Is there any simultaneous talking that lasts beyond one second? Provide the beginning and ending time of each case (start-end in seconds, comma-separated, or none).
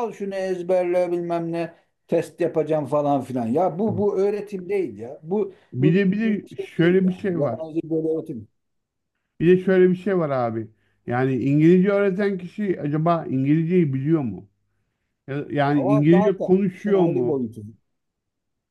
5.7-7.6, 15.8-17.5